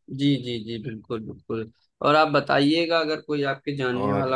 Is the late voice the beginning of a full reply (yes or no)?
no